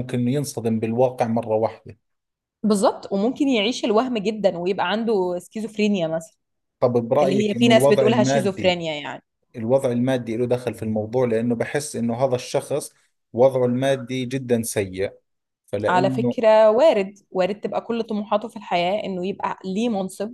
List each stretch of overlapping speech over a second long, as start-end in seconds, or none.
7.2-8.8